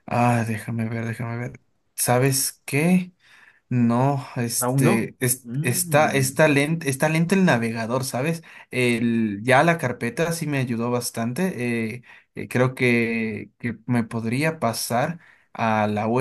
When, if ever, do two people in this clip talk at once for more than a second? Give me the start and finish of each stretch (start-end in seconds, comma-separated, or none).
4.6-6.3